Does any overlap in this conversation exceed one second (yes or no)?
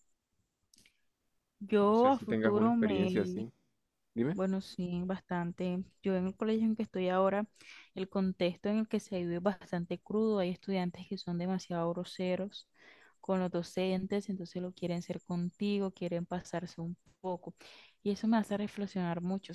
yes